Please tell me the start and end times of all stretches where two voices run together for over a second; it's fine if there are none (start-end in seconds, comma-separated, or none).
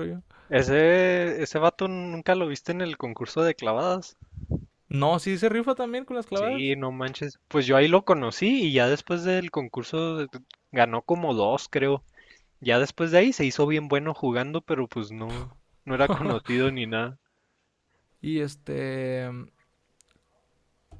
none